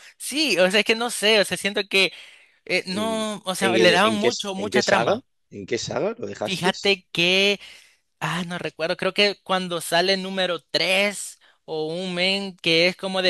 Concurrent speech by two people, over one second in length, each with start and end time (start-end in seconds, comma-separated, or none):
2.9-5.1